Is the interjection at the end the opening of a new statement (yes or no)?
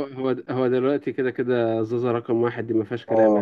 yes